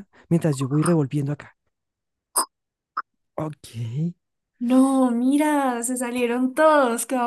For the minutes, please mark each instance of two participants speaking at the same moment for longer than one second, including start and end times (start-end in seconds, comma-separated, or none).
none